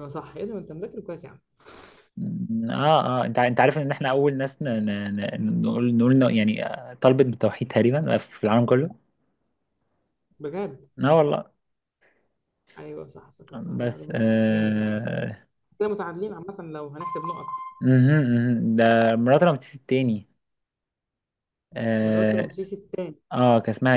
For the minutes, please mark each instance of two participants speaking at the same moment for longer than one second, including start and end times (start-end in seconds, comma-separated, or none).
13.8-15.0